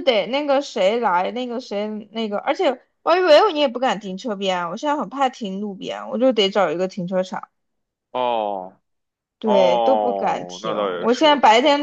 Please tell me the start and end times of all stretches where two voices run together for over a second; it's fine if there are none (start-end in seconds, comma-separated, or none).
9.4-11.3